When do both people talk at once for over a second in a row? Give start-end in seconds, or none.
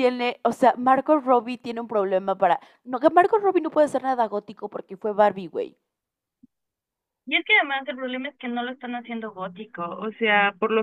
none